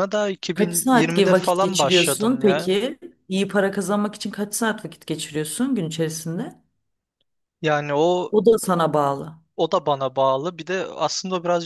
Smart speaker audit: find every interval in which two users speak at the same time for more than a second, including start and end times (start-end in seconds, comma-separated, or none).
0.5-2.7